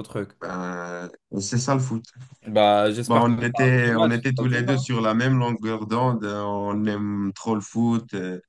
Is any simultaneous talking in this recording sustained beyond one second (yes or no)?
yes